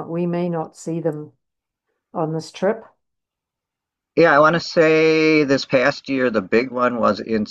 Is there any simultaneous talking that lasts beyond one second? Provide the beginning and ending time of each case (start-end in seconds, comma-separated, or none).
none